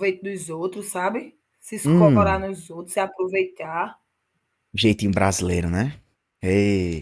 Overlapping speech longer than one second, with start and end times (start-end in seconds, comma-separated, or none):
none